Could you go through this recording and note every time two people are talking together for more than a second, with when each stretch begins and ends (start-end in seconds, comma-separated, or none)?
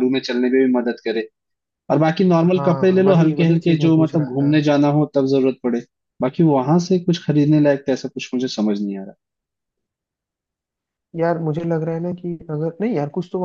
2.5-4.5